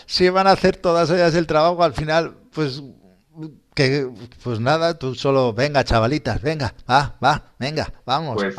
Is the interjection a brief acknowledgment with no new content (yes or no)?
no